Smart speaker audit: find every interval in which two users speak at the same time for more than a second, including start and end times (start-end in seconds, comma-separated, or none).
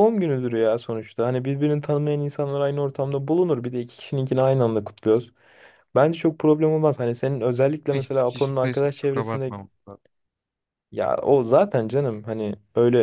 7.9-9.5